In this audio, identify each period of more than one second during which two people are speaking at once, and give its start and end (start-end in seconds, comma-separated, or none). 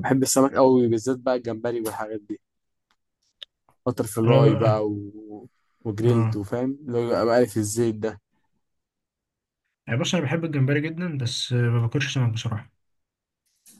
none